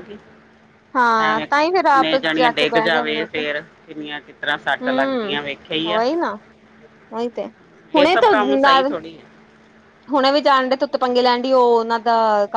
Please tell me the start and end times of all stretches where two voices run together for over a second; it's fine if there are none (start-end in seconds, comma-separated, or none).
1.3-3.4